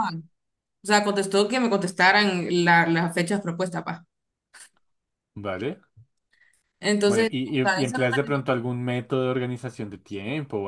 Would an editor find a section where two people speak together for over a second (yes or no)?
yes